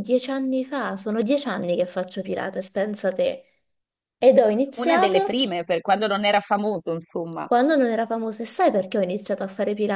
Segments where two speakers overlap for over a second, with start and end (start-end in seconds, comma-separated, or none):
none